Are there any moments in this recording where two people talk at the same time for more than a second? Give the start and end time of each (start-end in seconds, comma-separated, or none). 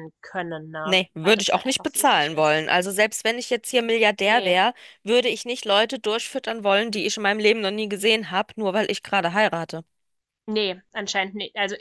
0.8-2.6